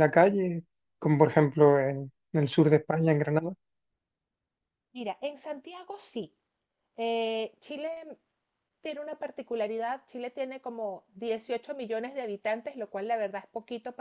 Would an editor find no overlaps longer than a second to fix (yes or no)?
yes